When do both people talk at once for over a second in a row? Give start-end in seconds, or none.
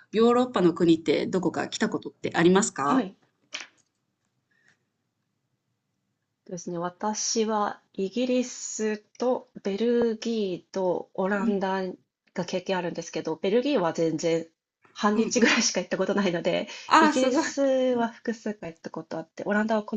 none